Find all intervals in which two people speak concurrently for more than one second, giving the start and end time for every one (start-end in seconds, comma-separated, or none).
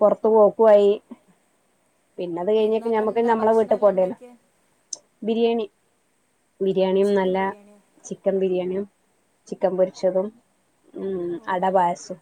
2.6-4.2